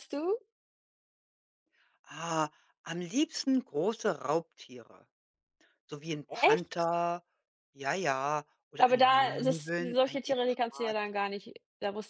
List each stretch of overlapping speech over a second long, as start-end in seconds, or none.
8.8-11.0